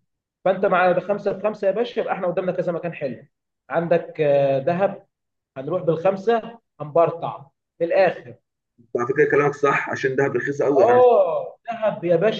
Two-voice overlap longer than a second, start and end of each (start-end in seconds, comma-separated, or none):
none